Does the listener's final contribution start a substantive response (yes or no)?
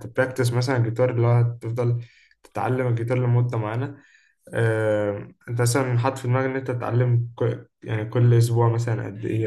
yes